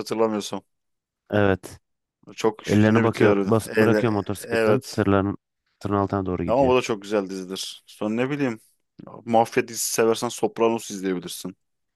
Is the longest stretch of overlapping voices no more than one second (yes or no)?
no